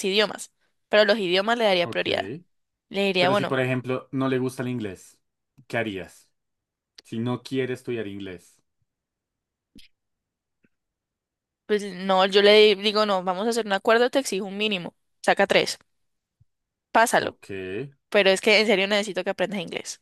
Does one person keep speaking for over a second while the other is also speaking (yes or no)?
no